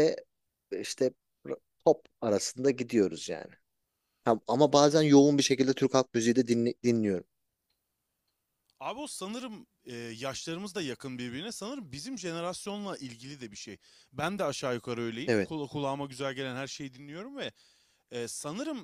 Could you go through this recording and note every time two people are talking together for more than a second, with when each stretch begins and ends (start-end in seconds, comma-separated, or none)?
none